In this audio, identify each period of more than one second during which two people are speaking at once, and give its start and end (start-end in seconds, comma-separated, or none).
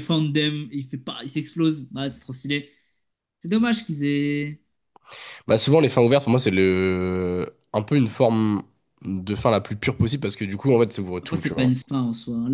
none